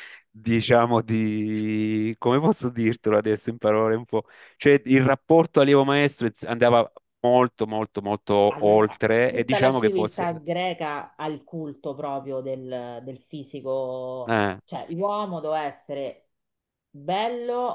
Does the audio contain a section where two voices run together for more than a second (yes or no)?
yes